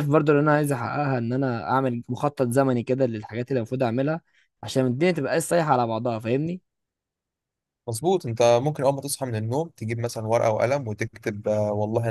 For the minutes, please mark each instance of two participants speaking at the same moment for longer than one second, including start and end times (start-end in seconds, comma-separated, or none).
none